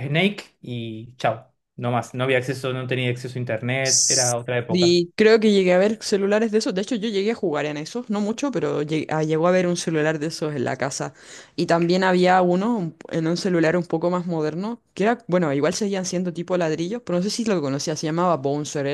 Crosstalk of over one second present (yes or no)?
yes